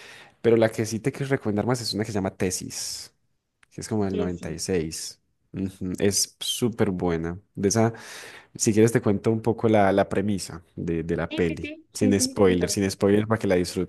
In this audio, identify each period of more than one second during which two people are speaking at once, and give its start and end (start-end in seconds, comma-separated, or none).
11.3-12.8